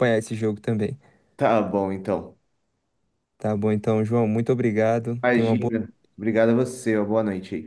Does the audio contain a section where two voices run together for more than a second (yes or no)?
no